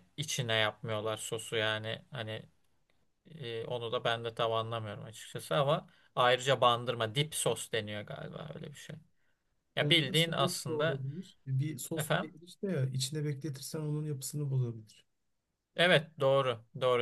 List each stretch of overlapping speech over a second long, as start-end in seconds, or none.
9.8-11.1